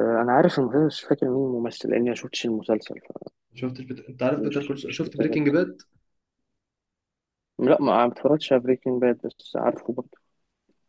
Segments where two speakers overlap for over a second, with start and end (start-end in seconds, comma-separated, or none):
4.3-5.6